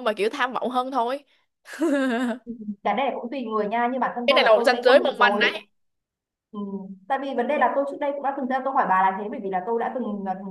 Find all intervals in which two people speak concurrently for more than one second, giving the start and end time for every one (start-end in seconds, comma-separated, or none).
4.3-5.6